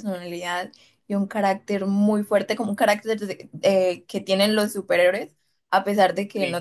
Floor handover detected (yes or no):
no